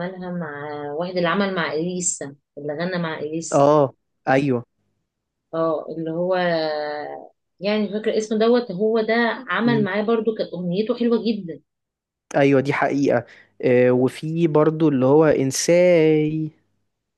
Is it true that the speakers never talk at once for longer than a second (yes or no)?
yes